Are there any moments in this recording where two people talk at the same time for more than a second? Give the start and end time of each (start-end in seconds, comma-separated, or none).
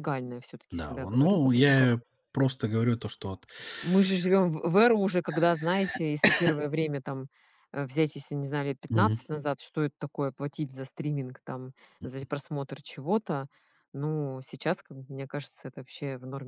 0.7-2.0